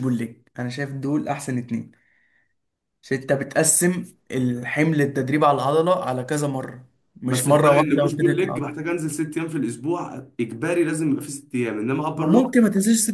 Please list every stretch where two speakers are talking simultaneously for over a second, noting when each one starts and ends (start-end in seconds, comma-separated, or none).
7.3-8.8